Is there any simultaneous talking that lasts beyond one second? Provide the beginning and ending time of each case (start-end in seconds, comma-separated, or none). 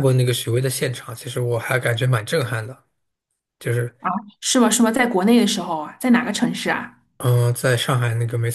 none